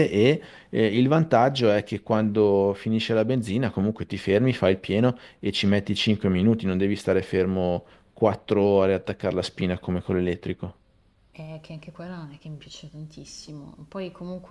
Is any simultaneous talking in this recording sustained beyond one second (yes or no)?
no